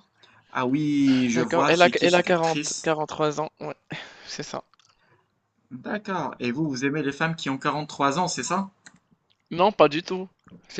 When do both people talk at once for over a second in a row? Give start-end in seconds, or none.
1.3-2.9